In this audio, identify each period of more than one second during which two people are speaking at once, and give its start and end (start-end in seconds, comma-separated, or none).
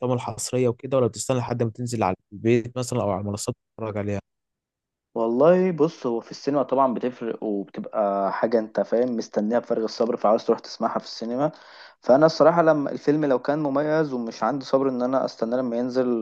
none